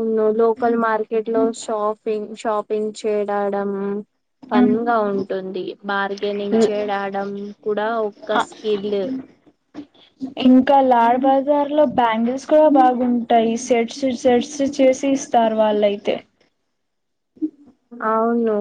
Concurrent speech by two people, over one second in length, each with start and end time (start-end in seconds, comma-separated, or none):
none